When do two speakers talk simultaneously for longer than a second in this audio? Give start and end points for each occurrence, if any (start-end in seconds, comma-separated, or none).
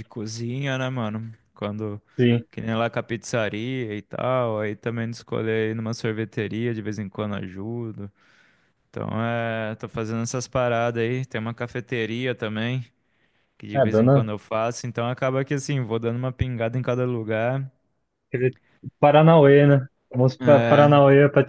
none